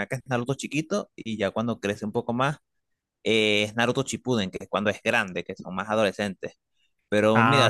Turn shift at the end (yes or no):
yes